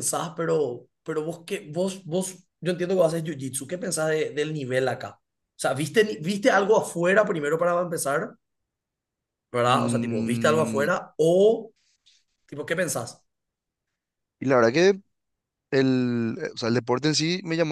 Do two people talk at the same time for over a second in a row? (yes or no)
yes